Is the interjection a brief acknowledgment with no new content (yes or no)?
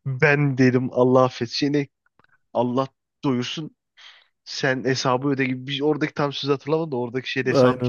no